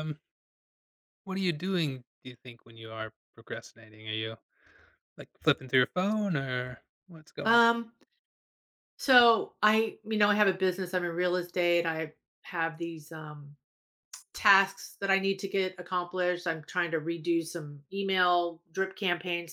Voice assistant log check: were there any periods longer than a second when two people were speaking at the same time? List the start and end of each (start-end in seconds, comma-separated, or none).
none